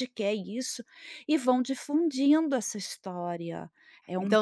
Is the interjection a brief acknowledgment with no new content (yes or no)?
no